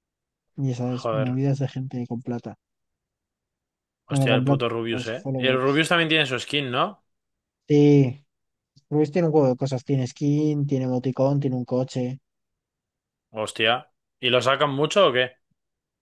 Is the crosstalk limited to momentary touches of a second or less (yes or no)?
no